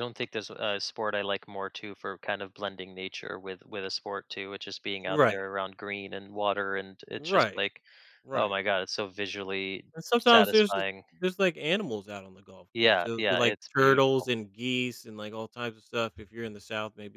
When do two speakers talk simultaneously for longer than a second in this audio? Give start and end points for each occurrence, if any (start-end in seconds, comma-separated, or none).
12.7-14.3